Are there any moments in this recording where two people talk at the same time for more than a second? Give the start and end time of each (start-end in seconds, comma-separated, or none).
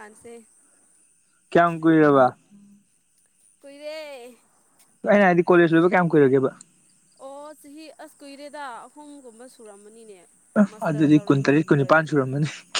10.7-12.2